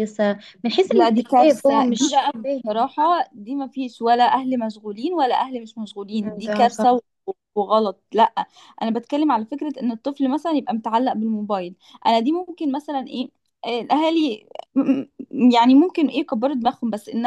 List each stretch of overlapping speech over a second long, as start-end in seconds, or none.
0.9-2.9